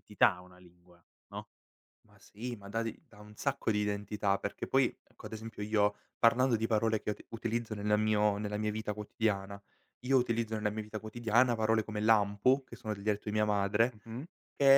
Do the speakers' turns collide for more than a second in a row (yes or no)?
no